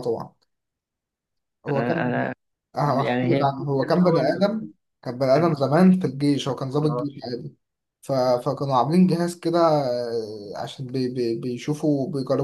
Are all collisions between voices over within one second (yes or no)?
no